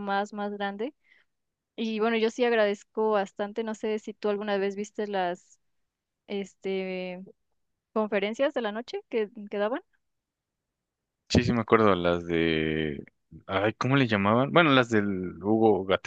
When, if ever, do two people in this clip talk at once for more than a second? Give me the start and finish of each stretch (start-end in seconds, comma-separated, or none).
none